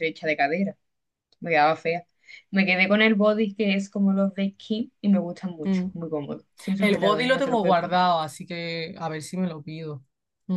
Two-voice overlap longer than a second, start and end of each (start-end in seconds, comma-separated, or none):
6.8-8.0